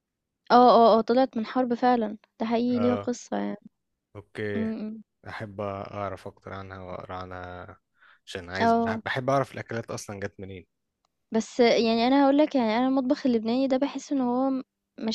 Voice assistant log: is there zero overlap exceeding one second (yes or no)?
yes